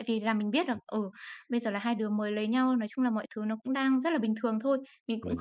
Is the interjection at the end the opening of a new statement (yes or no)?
no